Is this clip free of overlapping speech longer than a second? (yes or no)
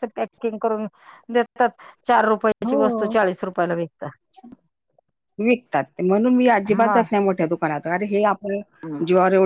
yes